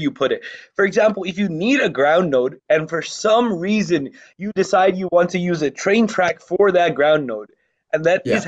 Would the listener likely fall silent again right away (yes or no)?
yes